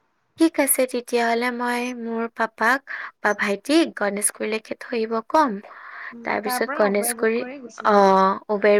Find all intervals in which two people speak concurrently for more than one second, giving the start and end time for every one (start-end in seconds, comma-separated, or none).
6.3-8.0